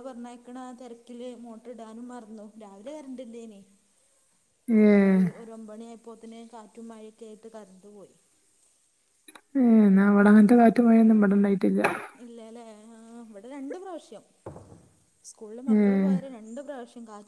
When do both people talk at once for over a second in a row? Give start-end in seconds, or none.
none